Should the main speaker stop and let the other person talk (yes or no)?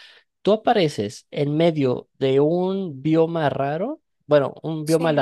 no